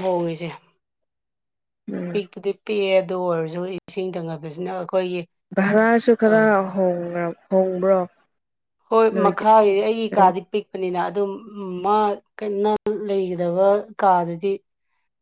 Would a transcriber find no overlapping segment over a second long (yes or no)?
yes